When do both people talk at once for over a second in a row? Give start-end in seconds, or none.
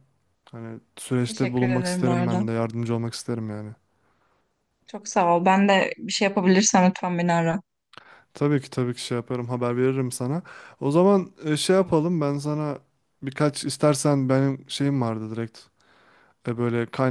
1.3-2.5